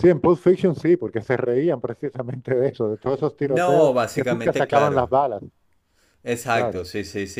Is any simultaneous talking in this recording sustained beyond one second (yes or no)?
yes